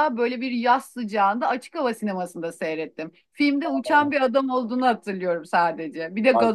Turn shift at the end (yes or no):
yes